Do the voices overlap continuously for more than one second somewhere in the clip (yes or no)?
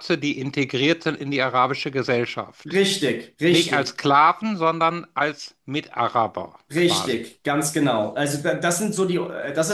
no